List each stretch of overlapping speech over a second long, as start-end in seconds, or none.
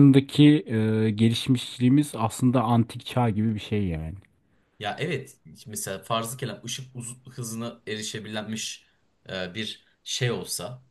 none